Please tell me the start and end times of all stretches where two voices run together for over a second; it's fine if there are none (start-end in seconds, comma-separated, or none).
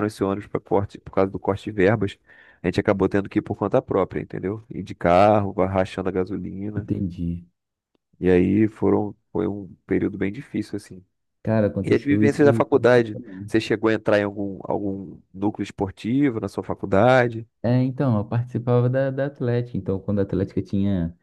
11.8-13.5